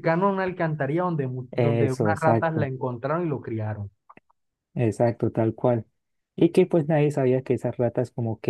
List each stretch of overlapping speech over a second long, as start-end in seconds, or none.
1.5-2.7